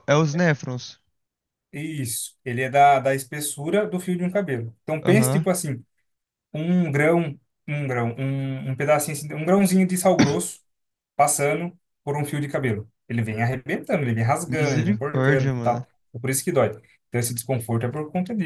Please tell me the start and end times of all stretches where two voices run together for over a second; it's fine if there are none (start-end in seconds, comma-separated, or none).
14.5-15.8